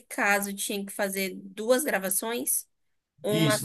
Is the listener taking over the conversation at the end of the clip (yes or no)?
yes